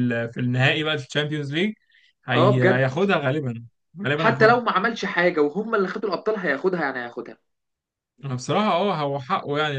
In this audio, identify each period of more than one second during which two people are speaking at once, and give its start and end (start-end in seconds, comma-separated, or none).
none